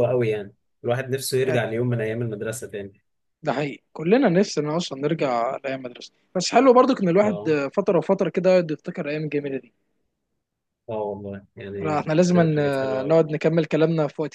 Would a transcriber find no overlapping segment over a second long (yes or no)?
no